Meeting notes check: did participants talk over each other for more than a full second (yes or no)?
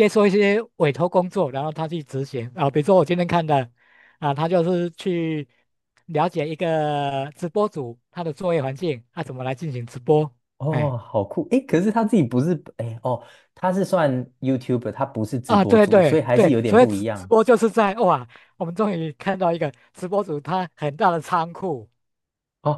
yes